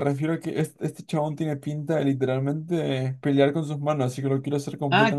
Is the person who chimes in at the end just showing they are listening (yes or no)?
no